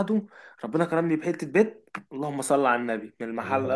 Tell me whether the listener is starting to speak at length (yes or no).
no